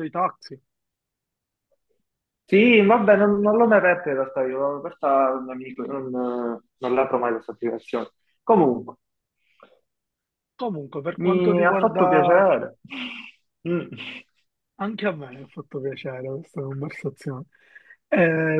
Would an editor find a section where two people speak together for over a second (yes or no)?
yes